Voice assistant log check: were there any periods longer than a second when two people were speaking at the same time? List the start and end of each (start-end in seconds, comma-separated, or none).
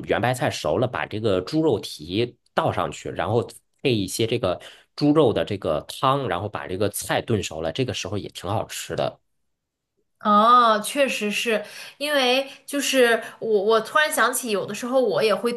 none